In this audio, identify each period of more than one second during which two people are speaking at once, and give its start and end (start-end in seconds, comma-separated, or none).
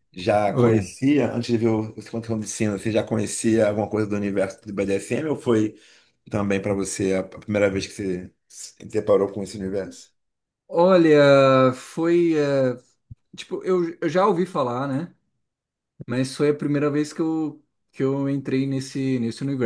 none